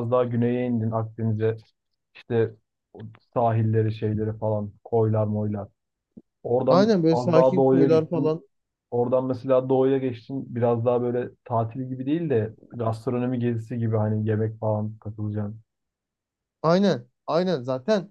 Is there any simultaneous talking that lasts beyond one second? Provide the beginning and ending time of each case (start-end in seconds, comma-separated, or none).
6.7-8.4